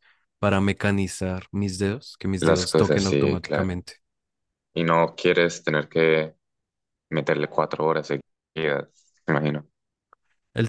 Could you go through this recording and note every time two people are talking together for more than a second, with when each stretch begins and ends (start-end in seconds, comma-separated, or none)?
2.4-3.8